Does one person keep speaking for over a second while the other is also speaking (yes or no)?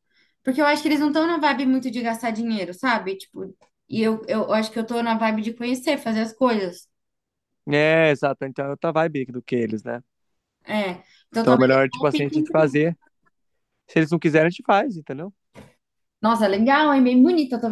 yes